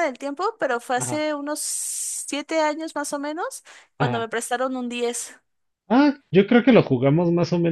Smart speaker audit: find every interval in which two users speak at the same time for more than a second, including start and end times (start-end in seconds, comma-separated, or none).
none